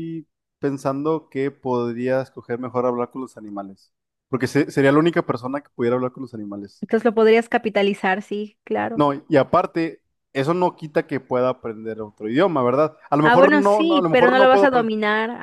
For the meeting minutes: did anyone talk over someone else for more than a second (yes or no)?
yes